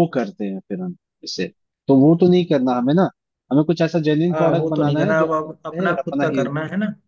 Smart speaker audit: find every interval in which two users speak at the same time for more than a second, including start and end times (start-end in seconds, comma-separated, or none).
4.3-6.5